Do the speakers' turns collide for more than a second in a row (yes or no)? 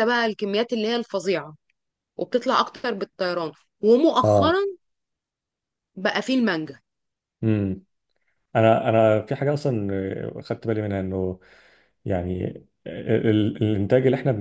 no